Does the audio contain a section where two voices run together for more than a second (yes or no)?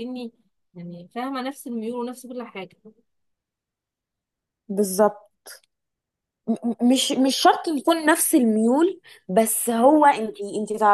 no